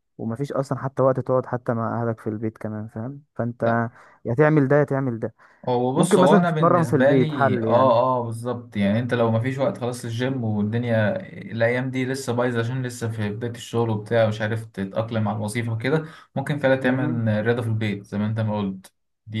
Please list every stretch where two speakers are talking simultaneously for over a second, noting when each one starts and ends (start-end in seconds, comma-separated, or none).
6.0-8.0